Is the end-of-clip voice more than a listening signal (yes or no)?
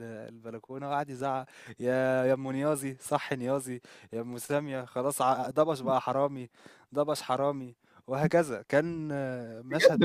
yes